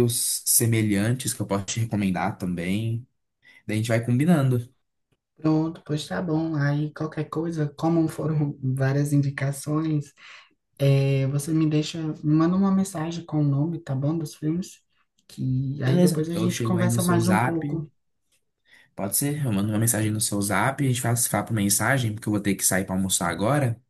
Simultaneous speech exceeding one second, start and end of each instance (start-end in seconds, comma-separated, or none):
15.8-17.6